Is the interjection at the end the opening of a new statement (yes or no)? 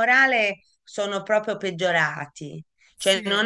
no